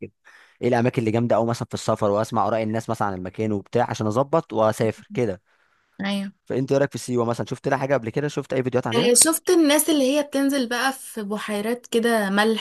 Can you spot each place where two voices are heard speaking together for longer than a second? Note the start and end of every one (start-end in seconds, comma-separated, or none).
none